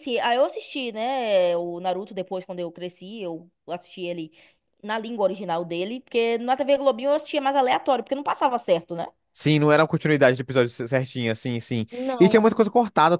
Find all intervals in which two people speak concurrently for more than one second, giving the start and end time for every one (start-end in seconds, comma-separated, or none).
none